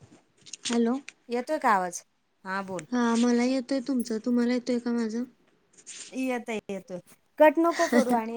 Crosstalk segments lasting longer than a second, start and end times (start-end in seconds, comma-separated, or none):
none